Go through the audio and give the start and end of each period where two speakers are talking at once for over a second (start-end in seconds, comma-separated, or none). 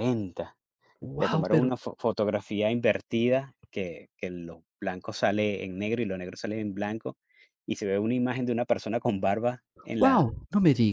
none